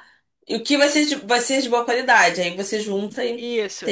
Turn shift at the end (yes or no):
yes